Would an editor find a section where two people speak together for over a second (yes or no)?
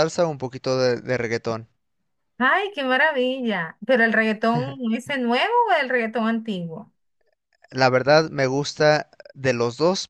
no